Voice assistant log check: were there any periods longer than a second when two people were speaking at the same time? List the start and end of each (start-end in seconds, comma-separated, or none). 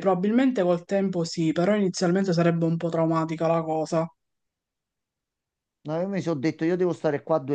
none